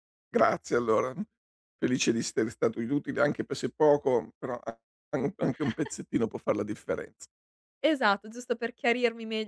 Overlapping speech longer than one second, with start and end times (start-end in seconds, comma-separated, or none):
none